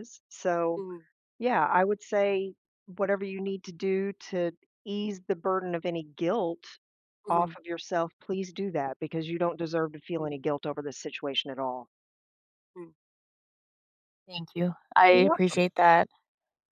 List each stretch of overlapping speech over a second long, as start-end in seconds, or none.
none